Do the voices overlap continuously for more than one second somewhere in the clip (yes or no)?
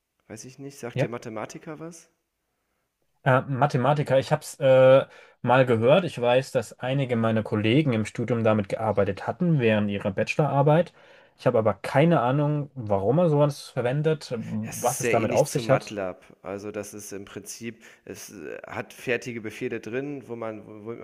yes